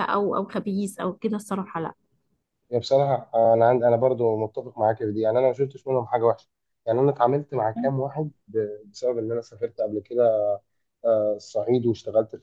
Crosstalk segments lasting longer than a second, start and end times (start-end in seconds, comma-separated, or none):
none